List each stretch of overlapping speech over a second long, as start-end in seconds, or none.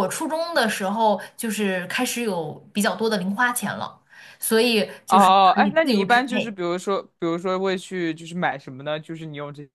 5.1-6.6